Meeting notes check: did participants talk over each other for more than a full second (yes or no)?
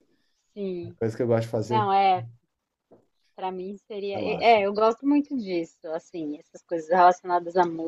no